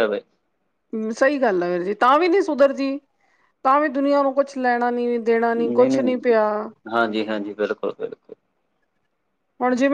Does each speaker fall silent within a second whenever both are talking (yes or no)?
yes